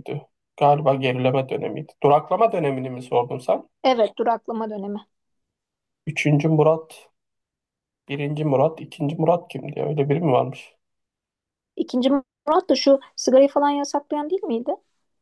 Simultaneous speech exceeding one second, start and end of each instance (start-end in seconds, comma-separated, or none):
none